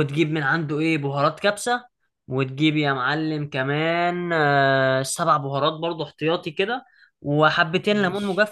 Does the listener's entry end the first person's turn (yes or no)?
no